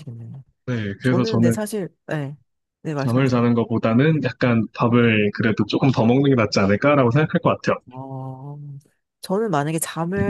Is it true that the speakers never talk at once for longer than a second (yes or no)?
yes